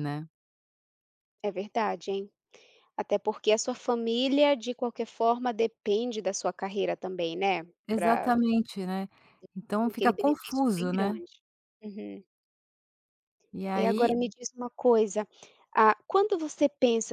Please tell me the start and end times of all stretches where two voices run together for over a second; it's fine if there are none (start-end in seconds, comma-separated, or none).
9.9-11.2